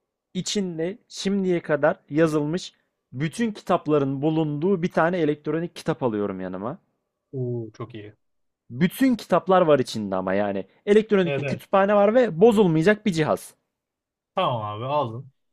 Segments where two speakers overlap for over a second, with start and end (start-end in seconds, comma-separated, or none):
none